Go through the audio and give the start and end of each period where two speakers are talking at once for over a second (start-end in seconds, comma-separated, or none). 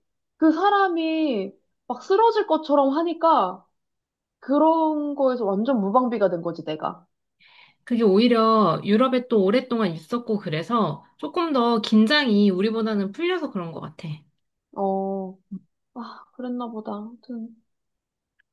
none